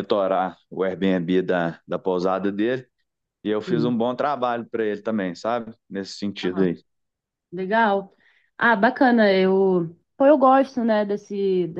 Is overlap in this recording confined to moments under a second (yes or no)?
yes